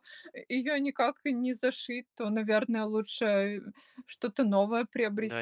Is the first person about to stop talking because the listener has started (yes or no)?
yes